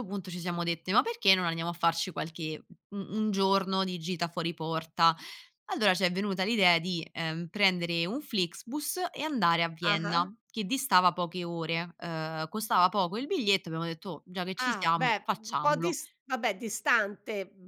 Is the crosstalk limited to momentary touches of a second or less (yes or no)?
no